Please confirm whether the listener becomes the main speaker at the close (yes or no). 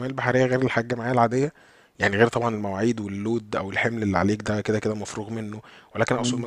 no